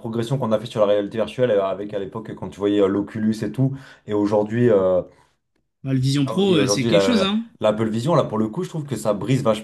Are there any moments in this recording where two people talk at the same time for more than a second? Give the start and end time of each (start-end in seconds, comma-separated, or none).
6.2-7.5